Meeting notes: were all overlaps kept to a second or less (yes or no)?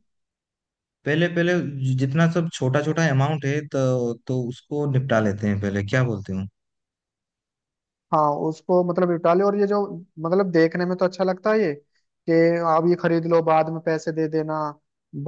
yes